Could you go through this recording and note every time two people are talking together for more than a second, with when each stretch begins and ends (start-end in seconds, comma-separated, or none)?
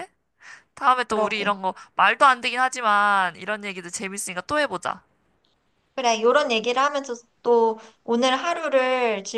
none